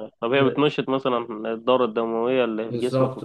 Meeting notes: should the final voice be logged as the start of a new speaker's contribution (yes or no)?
yes